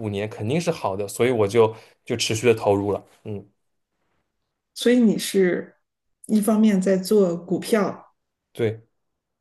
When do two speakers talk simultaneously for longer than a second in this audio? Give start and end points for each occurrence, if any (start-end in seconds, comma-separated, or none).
none